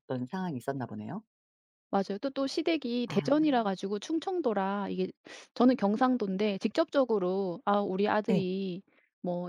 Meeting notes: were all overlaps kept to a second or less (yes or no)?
yes